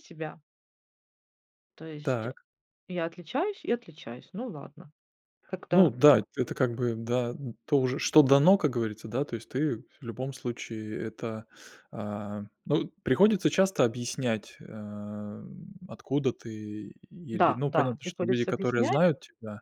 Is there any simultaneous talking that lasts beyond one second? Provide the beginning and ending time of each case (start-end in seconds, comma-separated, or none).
17.3-19.0